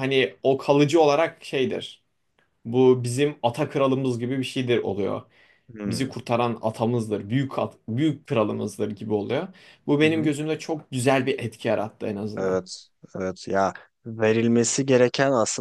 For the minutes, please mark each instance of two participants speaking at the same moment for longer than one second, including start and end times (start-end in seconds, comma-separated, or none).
none